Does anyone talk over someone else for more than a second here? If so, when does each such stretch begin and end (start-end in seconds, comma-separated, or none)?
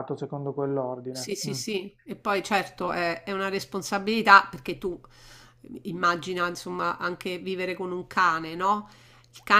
none